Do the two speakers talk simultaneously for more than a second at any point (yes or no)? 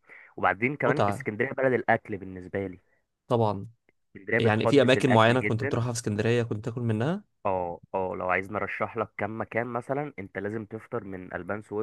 yes